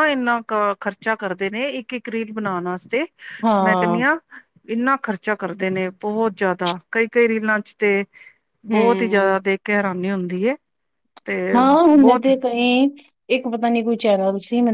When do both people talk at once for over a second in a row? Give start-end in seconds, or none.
none